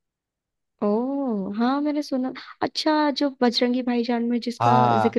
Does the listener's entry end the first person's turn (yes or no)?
yes